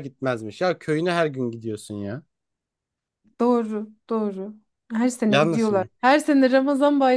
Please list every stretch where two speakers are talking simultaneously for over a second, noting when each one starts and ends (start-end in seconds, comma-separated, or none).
none